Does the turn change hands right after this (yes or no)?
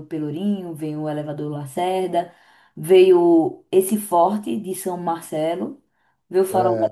no